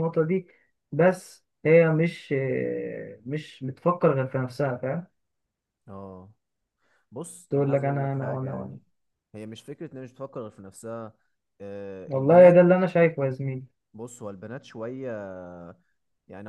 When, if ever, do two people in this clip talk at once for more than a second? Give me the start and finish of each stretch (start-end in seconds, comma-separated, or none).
7.5-8.8